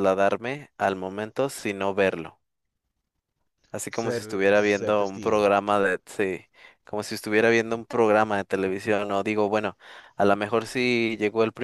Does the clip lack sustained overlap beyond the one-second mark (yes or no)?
no